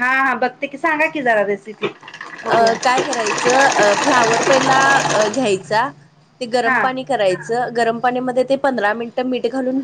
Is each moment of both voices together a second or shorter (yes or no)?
yes